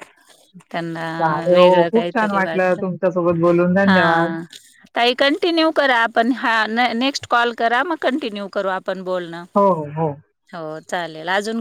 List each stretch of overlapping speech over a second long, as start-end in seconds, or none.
1.5-2.8